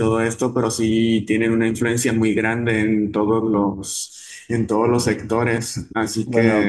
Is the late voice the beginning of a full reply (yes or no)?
yes